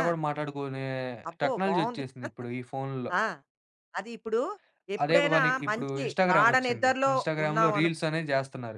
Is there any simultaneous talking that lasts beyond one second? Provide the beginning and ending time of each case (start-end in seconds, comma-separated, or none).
5.0-7.9